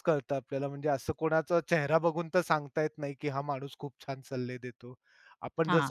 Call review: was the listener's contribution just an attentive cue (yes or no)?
yes